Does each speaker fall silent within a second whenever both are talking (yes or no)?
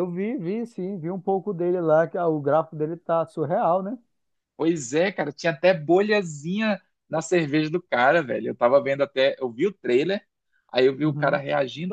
yes